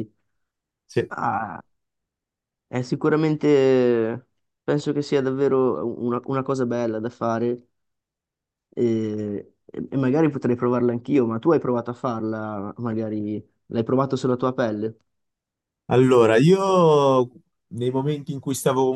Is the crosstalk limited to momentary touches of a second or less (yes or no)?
yes